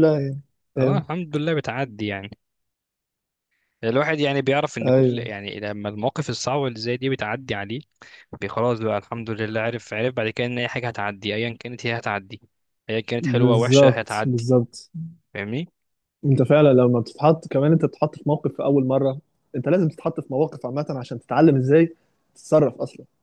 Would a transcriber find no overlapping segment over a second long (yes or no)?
no